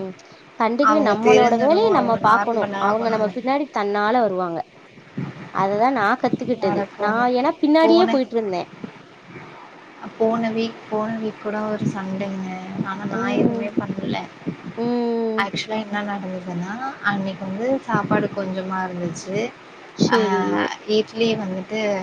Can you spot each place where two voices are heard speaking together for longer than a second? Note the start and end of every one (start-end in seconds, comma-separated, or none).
0.9-3.3